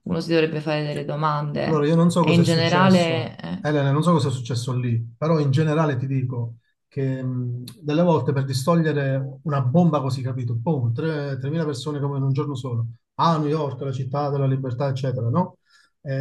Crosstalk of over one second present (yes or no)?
yes